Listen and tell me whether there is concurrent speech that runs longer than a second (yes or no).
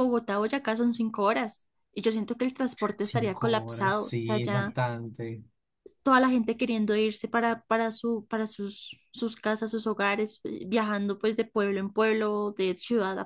yes